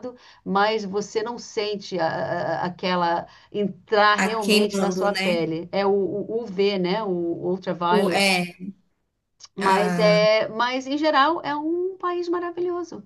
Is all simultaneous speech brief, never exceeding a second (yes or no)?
no